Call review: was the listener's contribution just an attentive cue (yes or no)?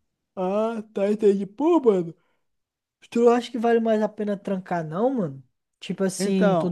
yes